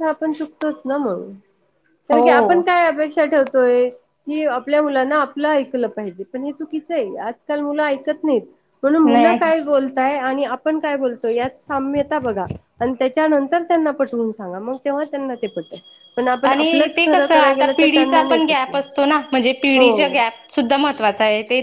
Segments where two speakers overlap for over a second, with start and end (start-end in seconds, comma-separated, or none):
16.5-18.9